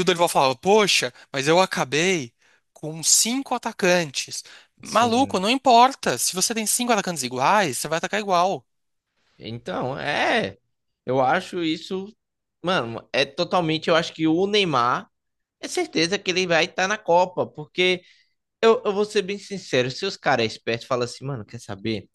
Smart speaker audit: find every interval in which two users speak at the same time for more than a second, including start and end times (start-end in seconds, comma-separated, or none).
none